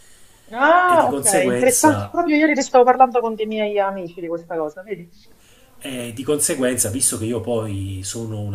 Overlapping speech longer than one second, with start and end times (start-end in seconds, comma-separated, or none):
0.9-2.2